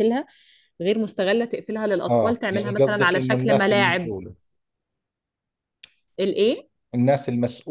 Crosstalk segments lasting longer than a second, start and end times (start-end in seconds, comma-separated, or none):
2.1-4.1